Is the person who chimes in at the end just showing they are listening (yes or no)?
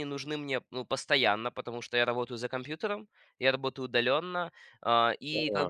yes